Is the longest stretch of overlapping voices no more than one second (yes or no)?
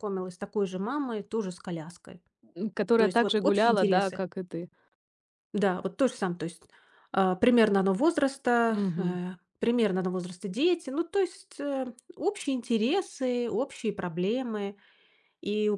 no